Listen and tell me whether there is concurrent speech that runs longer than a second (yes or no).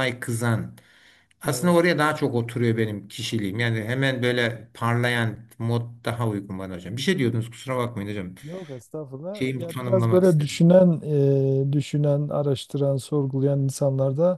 yes